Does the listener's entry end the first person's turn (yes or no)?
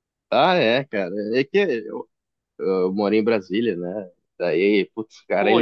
yes